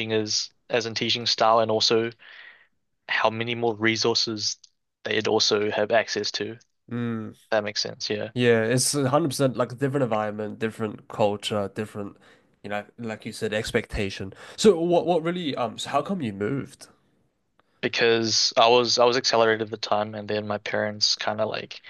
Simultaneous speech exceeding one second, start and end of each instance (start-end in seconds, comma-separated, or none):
none